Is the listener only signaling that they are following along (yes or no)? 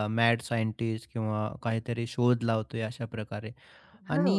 yes